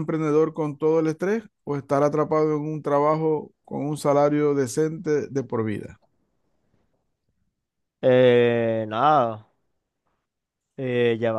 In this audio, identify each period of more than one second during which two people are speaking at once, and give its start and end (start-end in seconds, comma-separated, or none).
none